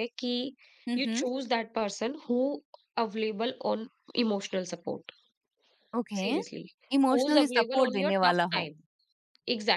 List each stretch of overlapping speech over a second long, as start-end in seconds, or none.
7.1-8.7